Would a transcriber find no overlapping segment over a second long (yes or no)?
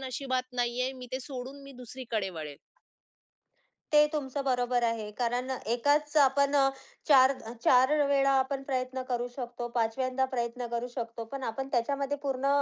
yes